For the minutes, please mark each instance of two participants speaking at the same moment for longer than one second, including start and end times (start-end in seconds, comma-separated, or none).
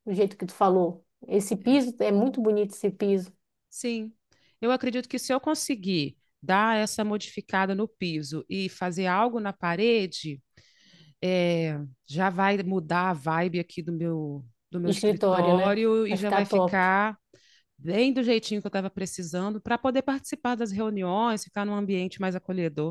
14.8-16.9